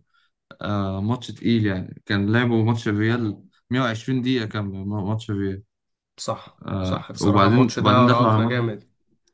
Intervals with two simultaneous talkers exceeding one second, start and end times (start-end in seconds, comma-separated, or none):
6.7-8.6